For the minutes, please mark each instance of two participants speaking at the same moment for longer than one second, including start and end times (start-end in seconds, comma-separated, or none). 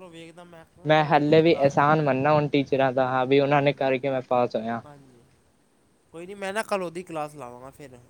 0.9-2.1